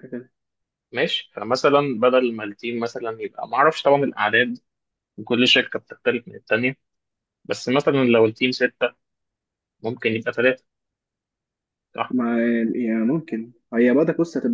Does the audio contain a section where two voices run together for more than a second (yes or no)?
no